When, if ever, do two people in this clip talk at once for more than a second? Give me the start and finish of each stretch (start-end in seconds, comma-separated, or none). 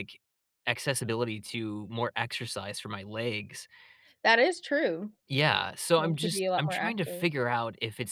6.0-7.2